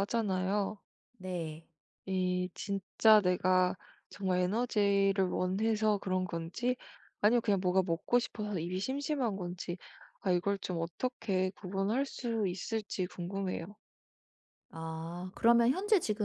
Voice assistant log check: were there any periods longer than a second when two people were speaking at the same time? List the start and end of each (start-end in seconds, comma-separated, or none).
none